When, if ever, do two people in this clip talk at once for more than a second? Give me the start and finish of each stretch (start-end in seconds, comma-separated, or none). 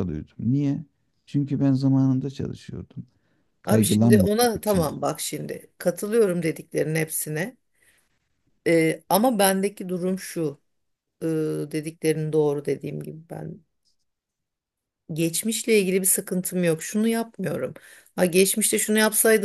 3.6-5.0